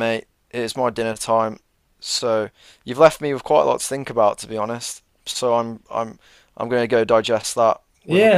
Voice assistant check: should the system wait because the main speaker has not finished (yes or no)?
no